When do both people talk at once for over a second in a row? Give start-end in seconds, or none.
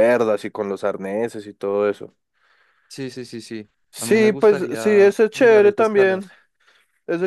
3.9-6.2